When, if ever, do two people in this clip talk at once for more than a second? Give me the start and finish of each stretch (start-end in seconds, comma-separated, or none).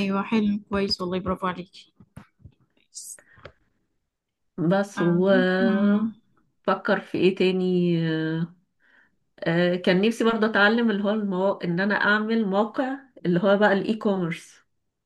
none